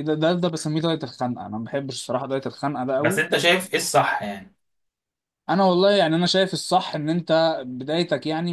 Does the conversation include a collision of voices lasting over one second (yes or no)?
no